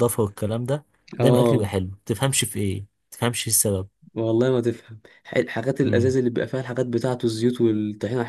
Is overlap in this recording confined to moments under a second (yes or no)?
yes